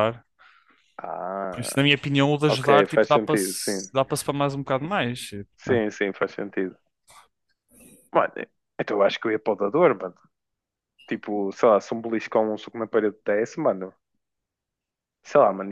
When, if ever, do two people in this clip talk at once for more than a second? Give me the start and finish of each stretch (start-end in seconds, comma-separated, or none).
2.5-3.9